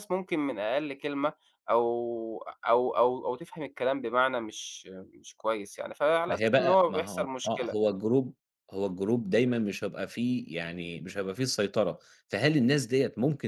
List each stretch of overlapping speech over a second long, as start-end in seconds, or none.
6.3-7.8